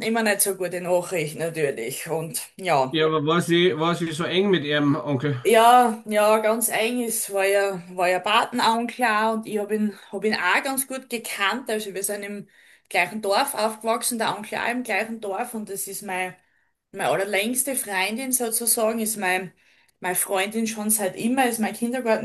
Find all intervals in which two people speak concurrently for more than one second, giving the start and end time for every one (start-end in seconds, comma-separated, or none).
none